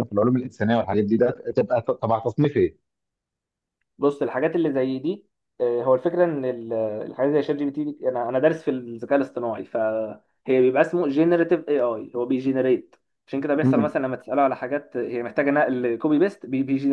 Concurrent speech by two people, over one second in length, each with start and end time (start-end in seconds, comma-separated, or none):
none